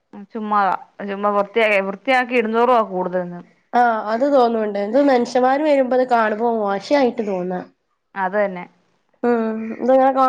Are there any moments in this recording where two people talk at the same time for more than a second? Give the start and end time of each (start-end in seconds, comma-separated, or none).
none